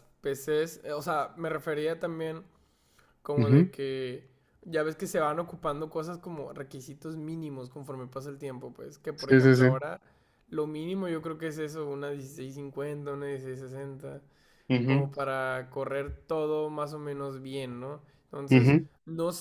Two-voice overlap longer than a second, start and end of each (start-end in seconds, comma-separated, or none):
none